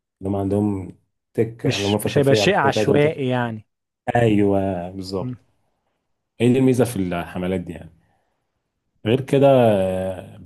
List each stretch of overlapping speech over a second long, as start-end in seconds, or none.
1.6-3.3